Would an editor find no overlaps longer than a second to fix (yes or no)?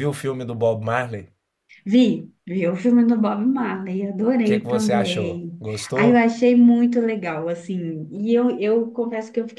no